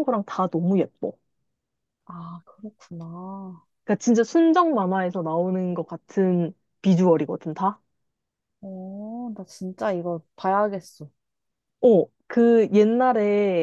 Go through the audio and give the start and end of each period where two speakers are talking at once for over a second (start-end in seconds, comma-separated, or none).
none